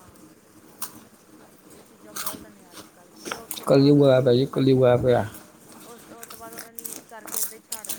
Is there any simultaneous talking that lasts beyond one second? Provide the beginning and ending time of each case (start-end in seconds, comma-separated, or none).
3.7-4.9